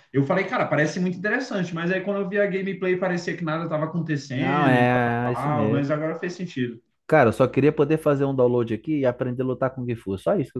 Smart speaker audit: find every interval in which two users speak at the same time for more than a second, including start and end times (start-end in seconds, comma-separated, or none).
4.3-5.9